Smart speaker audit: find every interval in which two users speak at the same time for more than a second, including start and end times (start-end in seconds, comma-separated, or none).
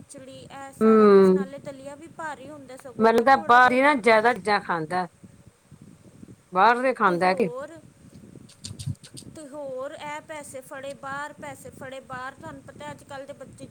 none